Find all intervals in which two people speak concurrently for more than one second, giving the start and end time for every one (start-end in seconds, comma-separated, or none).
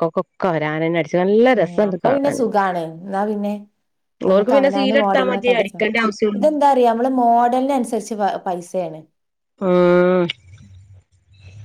4.3-5.7